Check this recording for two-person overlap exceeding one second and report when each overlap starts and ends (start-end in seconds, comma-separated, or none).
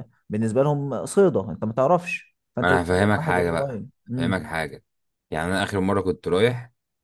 2.6-4.4